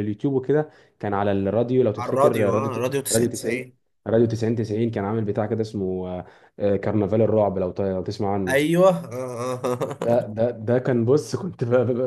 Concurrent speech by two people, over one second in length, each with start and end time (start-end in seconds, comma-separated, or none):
2.0-3.8